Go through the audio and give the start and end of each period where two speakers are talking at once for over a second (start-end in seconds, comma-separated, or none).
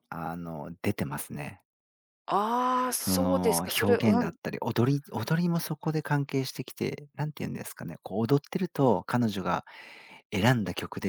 3.0-4.4